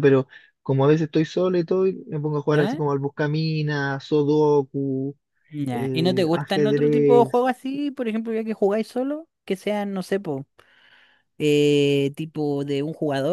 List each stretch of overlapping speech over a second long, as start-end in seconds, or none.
5.7-7.5